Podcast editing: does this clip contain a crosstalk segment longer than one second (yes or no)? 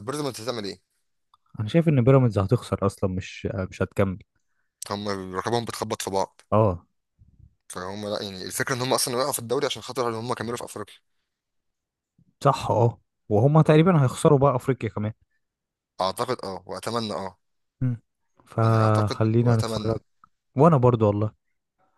yes